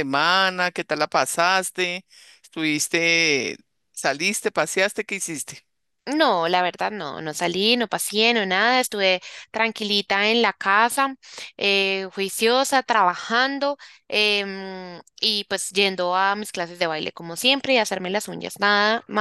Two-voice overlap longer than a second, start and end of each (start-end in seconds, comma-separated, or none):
none